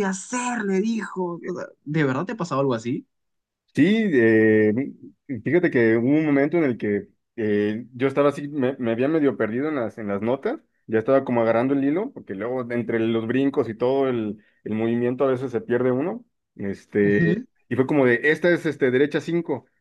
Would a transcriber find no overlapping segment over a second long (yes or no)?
yes